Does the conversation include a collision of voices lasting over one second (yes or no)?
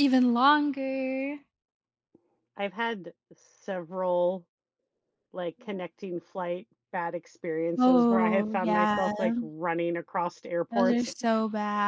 yes